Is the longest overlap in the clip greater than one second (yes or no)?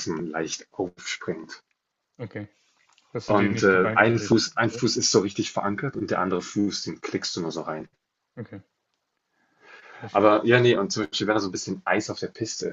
yes